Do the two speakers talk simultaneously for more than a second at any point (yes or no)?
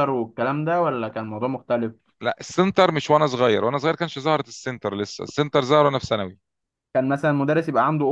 no